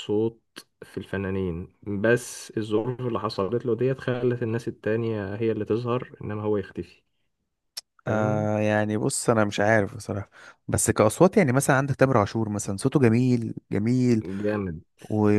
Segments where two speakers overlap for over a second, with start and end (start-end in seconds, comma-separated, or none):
none